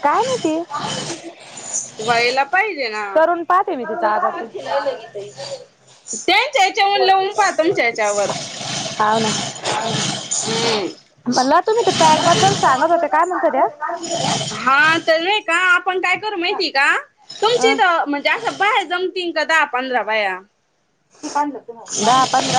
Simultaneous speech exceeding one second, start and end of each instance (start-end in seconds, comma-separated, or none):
none